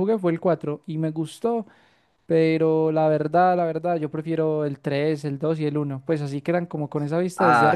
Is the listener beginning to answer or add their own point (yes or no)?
yes